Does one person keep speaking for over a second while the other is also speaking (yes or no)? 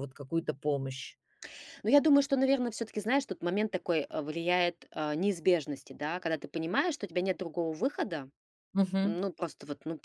no